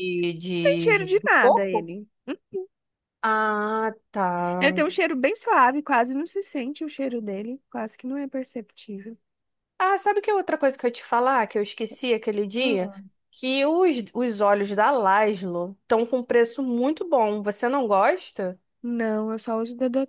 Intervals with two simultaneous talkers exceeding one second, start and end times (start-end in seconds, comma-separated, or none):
0.6-1.9